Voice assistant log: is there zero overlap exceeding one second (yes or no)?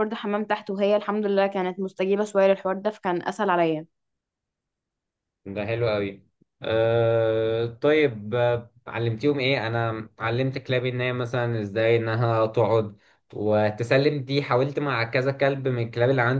yes